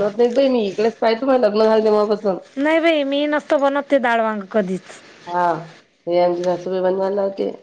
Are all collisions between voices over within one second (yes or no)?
yes